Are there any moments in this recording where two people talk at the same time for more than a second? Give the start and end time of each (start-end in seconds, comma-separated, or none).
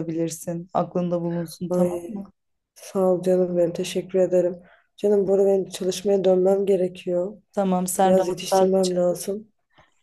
8.0-9.3